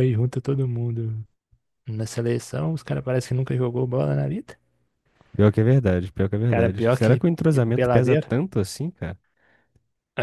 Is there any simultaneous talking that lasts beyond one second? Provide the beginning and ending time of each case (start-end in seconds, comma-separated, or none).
6.5-8.3